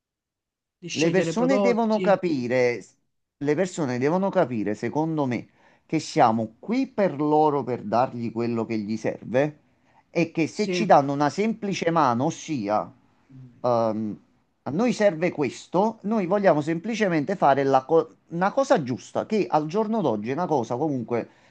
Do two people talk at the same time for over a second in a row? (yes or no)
yes